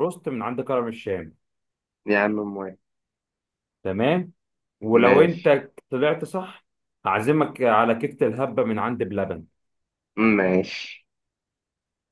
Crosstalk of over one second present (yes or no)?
no